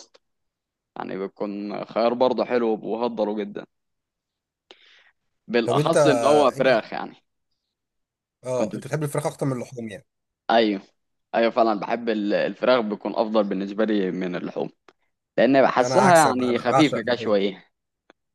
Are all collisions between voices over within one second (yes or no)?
no